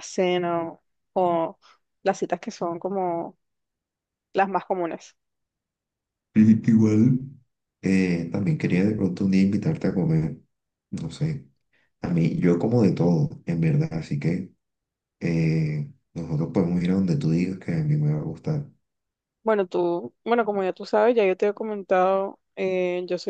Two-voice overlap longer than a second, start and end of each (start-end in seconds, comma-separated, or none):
none